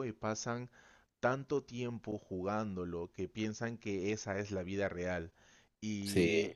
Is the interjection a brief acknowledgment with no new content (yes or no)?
yes